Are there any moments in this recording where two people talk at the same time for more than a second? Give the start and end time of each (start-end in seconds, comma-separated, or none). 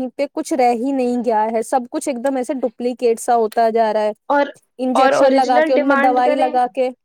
5.0-6.5